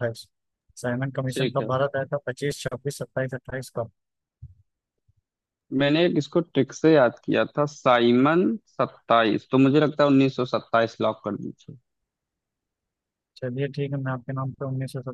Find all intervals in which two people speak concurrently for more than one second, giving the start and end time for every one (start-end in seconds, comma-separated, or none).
none